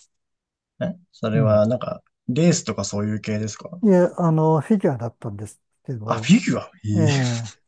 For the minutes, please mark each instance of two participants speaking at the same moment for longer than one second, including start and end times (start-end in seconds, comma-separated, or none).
none